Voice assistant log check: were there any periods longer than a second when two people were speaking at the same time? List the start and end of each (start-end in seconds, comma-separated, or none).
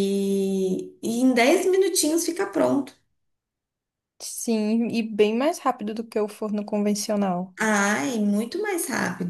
none